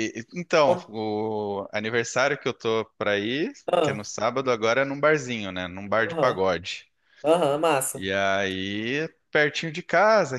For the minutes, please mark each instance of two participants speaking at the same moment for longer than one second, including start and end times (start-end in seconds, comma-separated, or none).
none